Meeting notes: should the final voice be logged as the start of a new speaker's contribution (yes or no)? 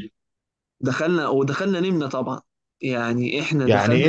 yes